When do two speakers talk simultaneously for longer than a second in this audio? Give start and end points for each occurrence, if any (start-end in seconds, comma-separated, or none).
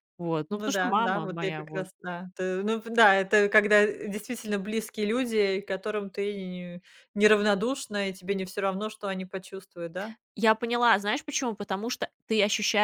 0.5-1.9